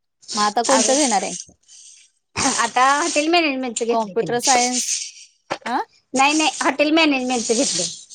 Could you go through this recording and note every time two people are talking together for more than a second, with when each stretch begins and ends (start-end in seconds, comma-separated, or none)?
none